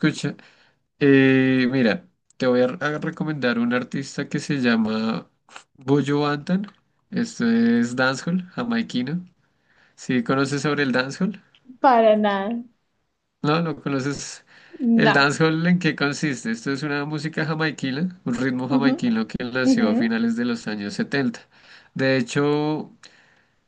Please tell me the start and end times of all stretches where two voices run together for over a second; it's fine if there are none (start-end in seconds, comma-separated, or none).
none